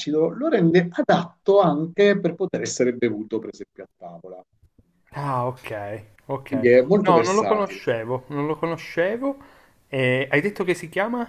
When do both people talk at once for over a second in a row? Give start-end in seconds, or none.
6.5-7.8